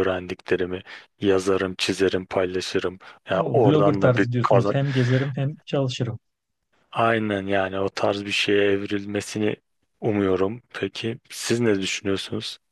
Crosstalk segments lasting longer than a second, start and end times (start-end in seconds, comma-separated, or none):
3.3-4.7